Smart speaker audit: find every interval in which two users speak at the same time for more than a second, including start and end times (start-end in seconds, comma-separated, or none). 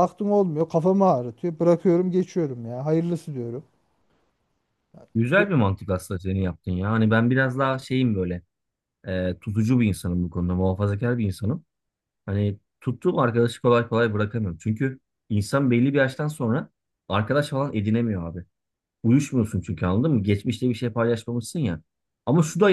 none